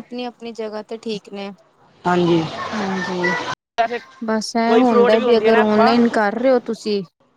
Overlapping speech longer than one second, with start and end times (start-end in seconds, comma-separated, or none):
4.7-5.9